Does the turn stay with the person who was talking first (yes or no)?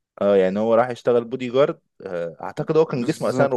no